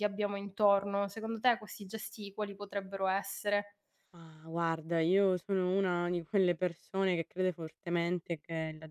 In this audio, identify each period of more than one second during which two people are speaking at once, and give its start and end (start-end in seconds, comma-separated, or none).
none